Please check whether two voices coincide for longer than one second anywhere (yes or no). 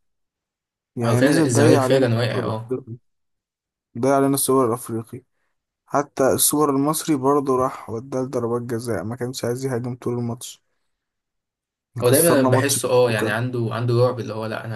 yes